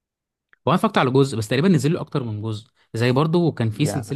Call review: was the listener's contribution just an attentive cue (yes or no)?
yes